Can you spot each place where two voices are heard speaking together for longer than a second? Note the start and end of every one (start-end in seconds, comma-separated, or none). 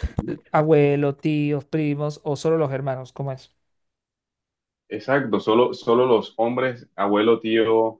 none